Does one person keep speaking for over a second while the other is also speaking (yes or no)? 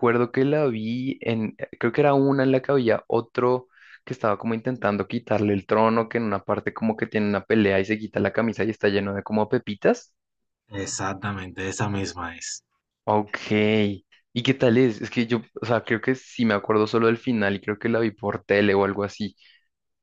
no